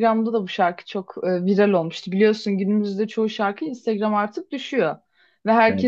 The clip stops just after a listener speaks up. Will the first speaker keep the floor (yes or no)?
yes